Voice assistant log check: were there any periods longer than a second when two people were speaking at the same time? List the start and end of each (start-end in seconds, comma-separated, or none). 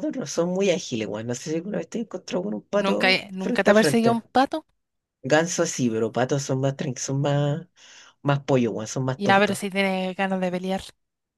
2.8-4.2